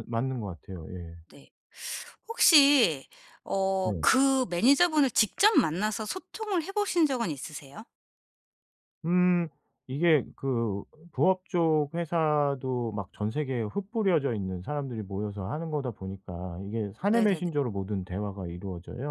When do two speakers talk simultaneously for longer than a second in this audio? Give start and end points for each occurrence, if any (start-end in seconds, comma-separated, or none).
none